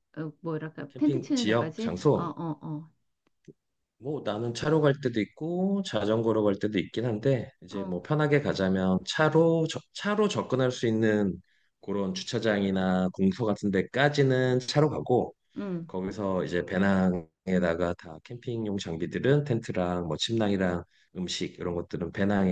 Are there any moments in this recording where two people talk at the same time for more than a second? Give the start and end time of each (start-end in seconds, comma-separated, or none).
0.9-2.3